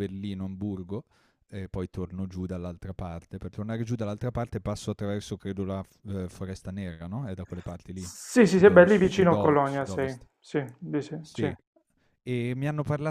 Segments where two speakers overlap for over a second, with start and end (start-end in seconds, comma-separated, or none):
7.9-10.3